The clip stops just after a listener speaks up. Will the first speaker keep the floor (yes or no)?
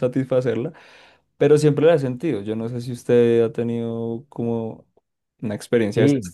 no